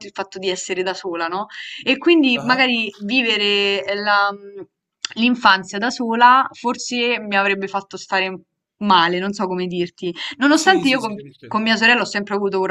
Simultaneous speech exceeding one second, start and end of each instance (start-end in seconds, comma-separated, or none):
10.5-11.8